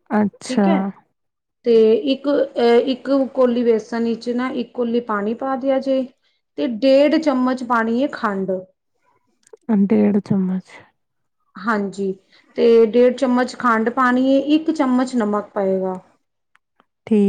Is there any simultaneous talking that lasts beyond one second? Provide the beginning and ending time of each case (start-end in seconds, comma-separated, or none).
none